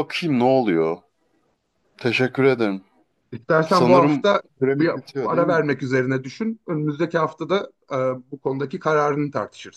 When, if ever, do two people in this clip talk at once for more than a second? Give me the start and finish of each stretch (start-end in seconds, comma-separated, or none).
3.6-5.6